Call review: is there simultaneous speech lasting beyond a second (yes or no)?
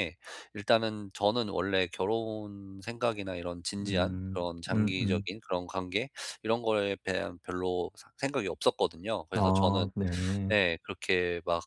yes